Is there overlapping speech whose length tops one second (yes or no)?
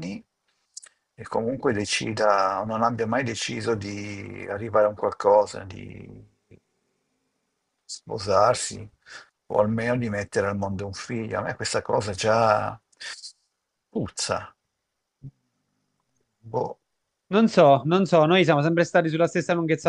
no